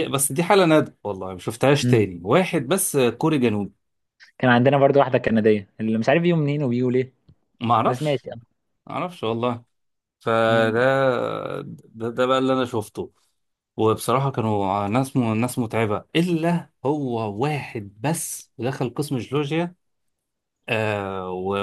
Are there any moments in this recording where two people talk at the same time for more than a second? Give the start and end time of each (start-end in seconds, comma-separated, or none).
none